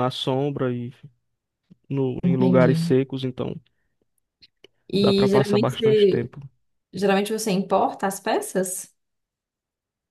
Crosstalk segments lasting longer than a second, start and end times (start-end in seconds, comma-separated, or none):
5.0-6.3